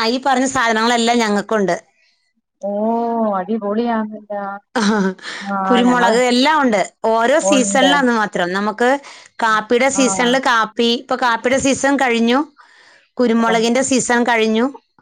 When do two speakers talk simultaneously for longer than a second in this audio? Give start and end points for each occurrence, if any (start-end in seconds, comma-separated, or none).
none